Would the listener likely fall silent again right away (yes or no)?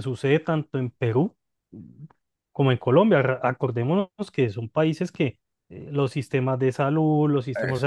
yes